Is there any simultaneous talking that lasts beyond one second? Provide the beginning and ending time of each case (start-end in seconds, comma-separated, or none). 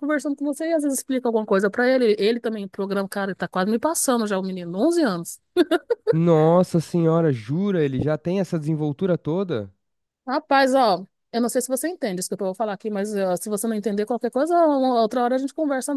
none